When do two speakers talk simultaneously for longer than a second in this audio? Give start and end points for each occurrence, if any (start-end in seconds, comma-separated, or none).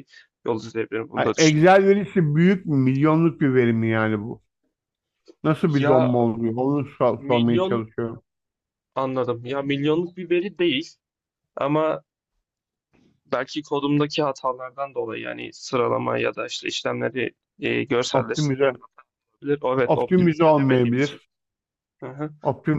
19.8-21.2